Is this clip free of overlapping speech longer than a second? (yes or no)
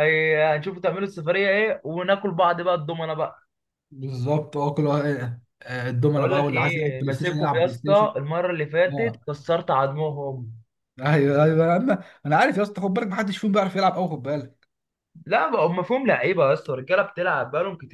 no